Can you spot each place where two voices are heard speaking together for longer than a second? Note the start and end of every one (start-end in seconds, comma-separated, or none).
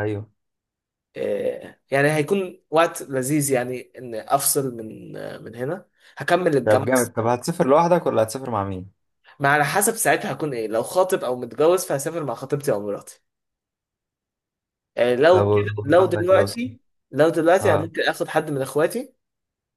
15.3-16.7